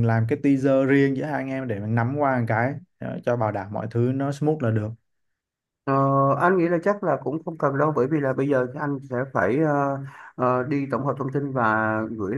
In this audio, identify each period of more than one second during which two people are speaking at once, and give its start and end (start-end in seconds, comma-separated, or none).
none